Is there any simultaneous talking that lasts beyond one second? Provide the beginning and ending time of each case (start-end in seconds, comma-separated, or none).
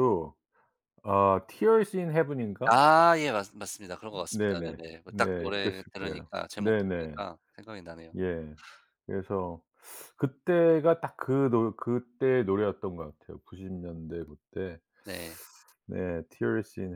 4.3-7.2